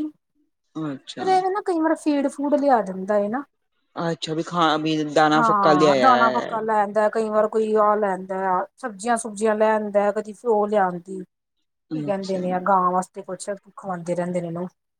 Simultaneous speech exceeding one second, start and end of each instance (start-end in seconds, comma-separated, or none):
5.4-6.6